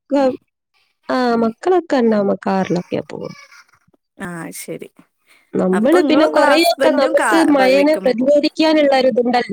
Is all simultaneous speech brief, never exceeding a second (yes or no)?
no